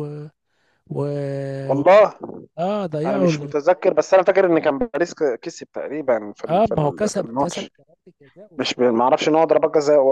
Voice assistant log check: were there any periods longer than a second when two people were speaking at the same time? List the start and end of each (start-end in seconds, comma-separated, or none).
6.5-7.7